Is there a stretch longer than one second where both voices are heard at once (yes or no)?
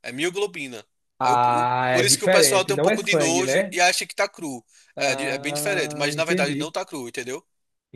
yes